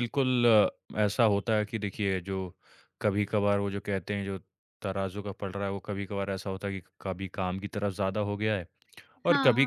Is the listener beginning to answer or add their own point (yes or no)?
no